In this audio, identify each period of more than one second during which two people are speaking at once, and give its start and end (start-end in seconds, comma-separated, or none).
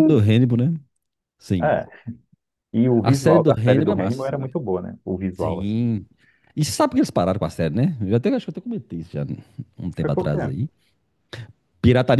3.0-4.5